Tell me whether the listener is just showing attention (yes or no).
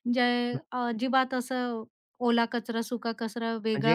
no